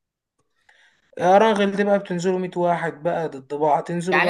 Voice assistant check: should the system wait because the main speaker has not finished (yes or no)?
no